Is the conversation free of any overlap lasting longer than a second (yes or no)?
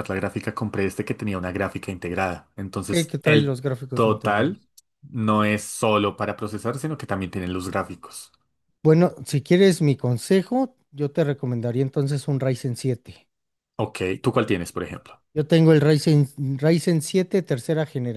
no